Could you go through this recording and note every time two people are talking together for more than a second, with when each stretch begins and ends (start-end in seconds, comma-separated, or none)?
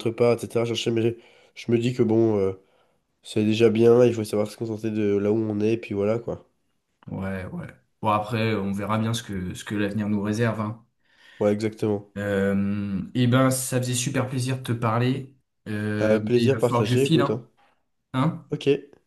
16.0-17.4